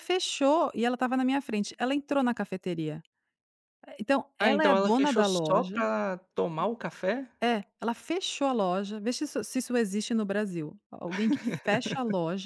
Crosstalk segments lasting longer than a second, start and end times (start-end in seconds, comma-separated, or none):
4.4-5.8